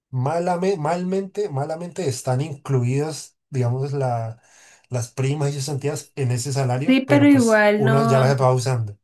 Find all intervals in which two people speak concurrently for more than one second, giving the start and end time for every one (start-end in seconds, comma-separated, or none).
6.9-8.4